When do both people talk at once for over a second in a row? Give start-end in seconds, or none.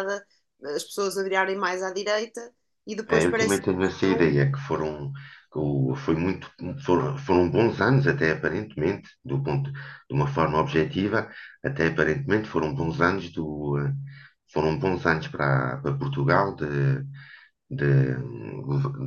3.0-4.3